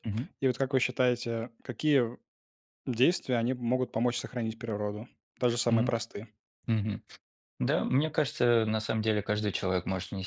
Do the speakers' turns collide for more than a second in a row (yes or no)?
no